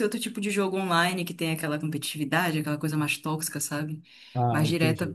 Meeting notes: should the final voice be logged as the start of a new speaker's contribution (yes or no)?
no